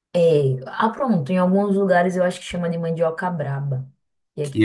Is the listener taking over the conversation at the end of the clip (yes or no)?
yes